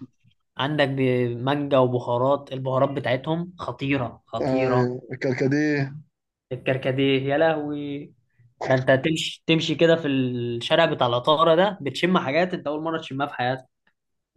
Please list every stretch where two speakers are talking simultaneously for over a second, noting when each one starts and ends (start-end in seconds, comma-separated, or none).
none